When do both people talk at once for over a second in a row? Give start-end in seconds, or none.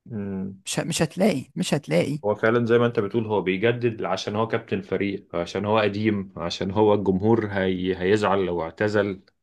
none